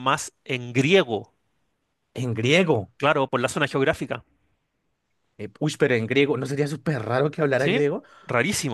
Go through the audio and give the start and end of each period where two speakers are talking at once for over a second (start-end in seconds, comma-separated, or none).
none